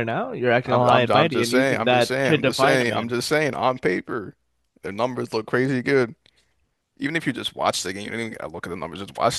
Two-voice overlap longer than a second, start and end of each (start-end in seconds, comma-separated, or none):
0.6-3.1